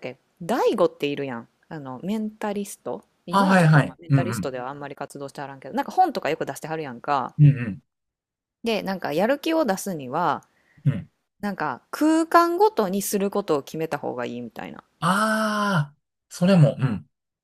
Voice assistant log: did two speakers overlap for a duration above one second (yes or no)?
yes